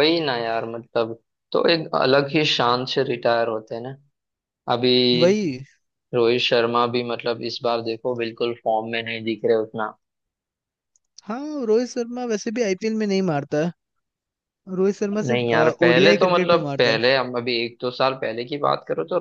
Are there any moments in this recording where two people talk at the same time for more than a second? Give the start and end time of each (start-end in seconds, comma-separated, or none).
15.3-17.0